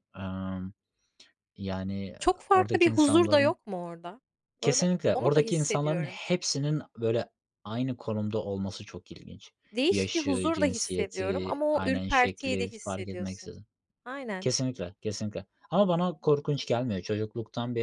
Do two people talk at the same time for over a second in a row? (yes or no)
yes